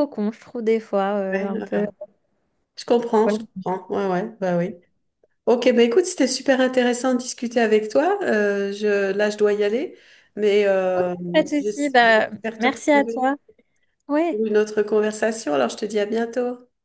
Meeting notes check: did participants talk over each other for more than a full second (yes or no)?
yes